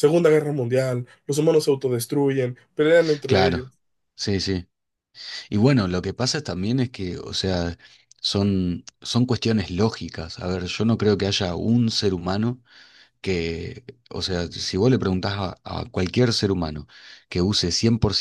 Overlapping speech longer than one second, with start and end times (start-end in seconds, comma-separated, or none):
none